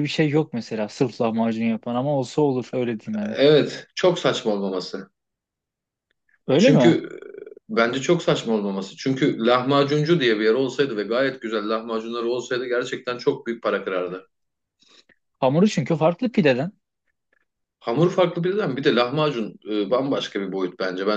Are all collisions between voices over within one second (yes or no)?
yes